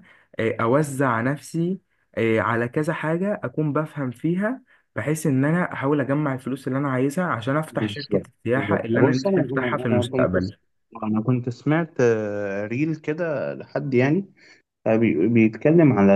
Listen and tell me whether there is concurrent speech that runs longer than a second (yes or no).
yes